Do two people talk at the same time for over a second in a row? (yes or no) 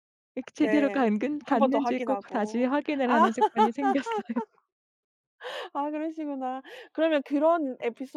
yes